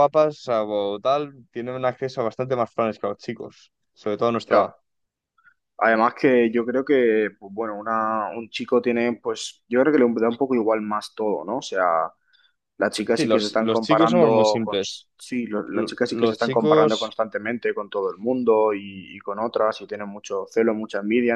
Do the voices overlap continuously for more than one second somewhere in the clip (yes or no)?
yes